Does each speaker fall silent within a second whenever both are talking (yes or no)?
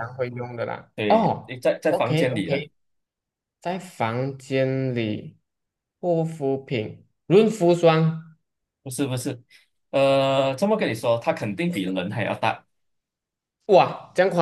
no